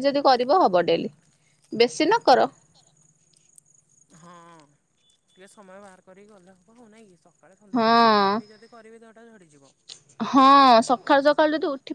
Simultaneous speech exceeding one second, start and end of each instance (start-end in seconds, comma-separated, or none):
none